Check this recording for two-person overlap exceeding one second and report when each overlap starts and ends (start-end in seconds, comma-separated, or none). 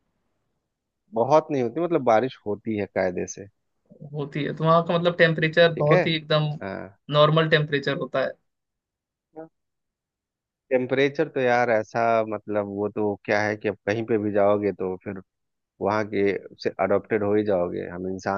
none